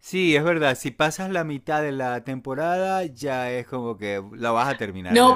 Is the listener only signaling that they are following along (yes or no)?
no